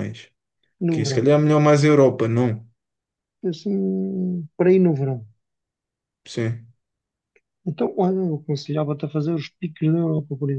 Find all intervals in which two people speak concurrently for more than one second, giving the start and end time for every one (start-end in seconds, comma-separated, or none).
none